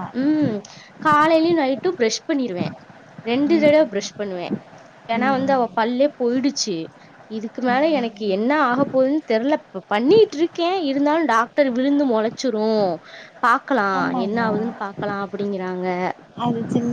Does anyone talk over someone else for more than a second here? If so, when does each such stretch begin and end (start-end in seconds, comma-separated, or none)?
none